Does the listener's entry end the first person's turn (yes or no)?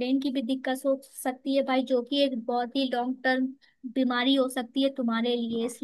no